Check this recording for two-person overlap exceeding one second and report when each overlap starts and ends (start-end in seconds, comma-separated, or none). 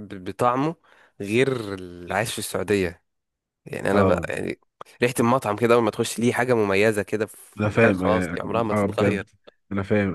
7.6-9.3